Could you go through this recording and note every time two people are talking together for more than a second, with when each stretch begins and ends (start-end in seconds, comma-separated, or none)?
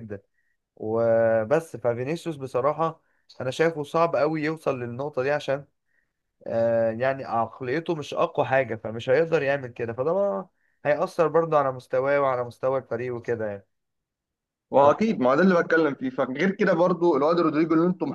none